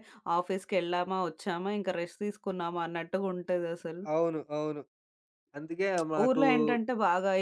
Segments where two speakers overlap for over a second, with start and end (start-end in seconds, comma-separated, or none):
none